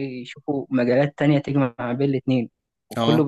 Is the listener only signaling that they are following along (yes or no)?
yes